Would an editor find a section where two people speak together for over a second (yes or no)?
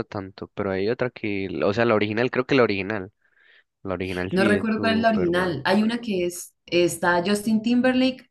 yes